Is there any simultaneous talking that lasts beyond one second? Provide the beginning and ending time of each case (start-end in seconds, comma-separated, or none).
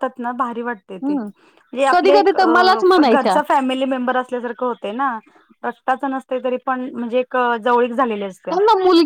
1.9-3.3